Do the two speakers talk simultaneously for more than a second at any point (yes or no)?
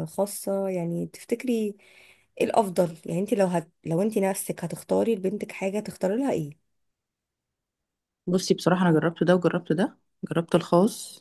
no